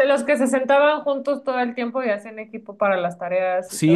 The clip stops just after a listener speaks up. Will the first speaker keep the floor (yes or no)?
no